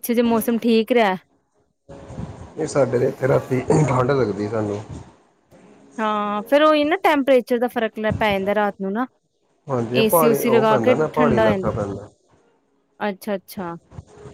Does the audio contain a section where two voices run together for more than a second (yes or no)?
yes